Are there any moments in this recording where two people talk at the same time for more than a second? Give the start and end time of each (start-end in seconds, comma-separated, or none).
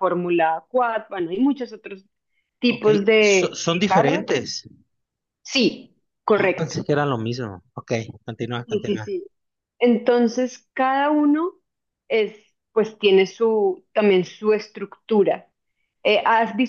2.7-4.2